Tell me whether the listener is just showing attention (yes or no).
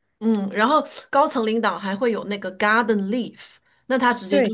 yes